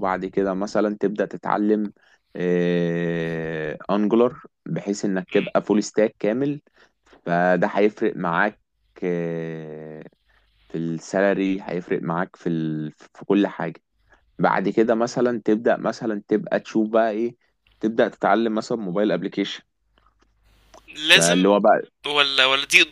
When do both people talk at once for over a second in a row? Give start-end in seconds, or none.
none